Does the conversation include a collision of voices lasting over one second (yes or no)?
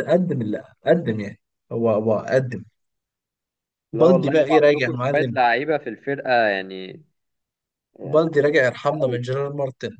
yes